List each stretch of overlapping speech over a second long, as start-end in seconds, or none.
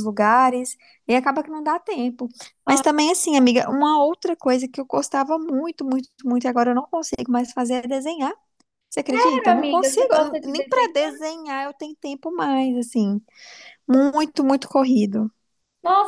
9.1-10.9